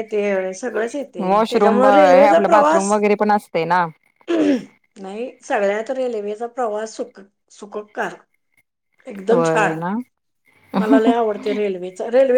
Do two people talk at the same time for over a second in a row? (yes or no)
yes